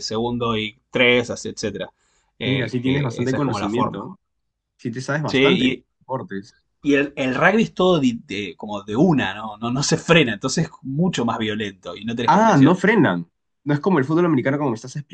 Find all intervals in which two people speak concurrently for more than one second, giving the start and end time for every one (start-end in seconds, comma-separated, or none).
2.4-4.0